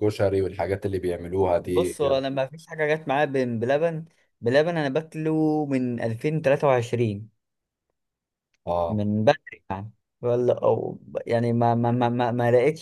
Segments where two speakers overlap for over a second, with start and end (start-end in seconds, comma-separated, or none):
none